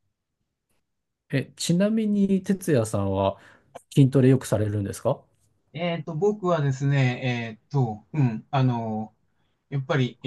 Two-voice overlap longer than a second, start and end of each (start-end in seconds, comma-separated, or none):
none